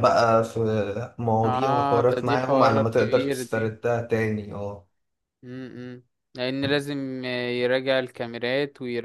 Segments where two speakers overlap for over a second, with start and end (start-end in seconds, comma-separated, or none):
1.4-3.6